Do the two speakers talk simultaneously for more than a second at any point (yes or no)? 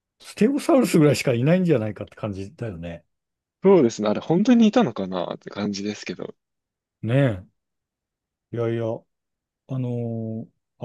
no